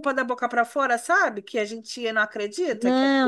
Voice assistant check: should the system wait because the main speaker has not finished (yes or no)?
no